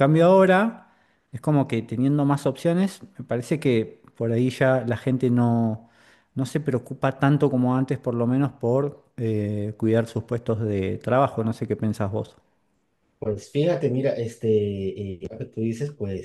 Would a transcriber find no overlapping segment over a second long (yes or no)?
yes